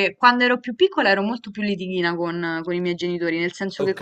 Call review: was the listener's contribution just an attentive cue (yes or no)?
yes